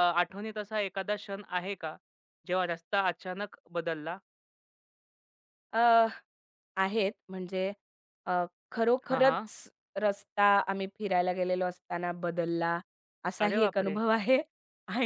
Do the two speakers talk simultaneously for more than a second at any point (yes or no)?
no